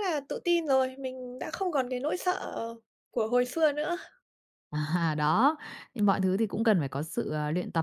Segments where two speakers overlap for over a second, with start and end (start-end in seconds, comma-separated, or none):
none